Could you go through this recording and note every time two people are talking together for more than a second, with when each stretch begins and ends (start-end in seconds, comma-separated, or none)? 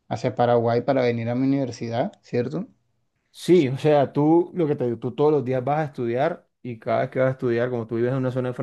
none